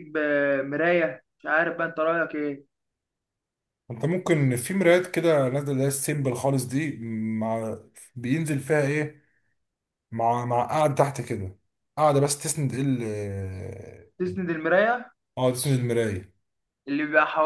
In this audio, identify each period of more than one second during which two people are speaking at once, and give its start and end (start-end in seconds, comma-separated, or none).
none